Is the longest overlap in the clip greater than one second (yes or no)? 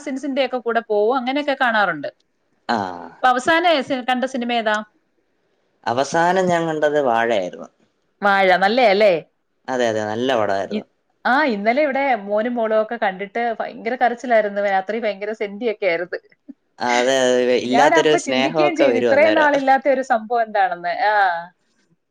yes